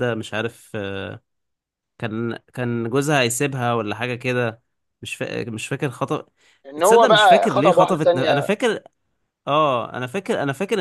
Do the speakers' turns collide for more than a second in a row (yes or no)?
yes